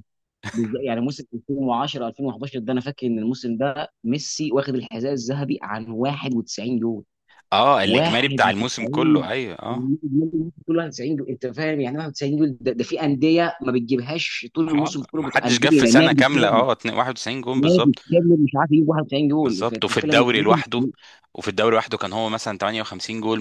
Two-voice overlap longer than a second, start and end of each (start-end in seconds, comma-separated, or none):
7.8-9.3, 14.8-16.6, 19.4-20.8